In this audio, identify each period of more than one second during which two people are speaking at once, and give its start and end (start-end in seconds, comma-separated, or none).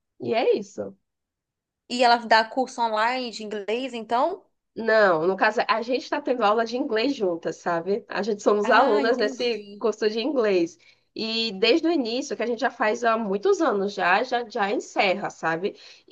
8.6-9.8